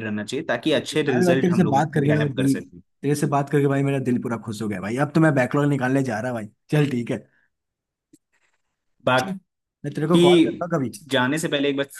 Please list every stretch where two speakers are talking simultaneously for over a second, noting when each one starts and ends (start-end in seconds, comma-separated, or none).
0.8-2.6